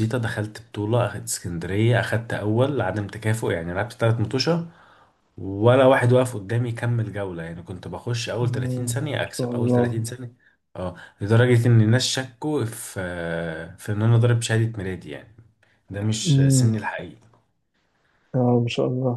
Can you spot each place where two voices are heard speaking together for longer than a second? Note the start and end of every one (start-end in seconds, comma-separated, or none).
8.4-10.0